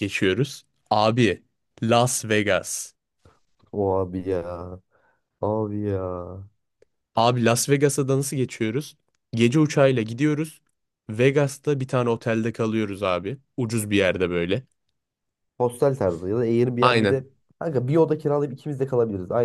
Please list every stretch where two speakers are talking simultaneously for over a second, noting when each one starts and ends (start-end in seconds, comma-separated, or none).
none